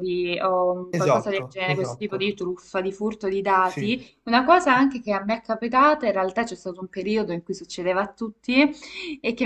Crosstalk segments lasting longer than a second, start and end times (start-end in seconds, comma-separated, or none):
0.9-2.3